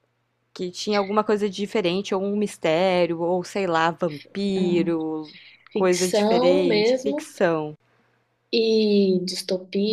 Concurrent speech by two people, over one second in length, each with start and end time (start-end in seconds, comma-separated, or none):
5.7-7.3